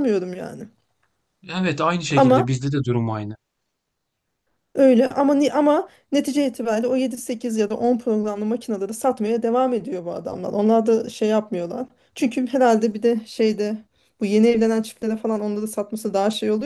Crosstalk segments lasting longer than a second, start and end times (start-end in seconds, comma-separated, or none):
none